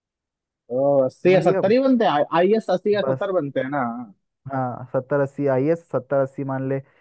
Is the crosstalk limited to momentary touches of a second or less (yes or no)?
yes